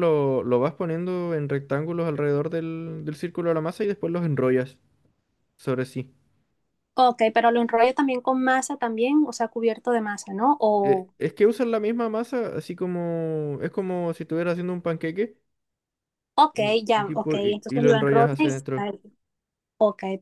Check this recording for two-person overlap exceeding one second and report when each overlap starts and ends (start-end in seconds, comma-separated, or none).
16.5-18.5